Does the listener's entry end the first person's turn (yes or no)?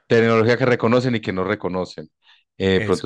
no